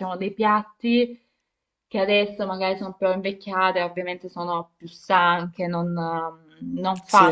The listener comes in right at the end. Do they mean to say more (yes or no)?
no